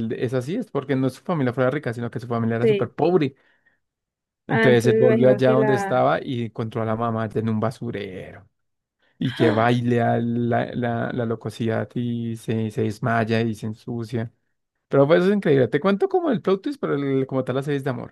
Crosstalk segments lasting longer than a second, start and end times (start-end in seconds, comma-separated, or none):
4.5-6.0